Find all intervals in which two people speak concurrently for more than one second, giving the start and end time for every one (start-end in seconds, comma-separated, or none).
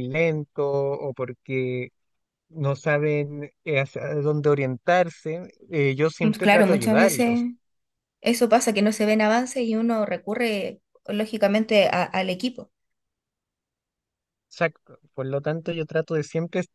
6.2-7.5